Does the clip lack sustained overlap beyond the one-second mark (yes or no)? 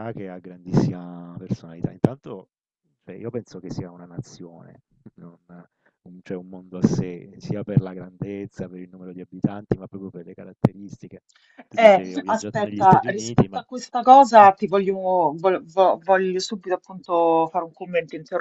no